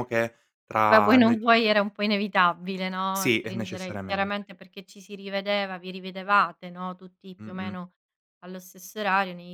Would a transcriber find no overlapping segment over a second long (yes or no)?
no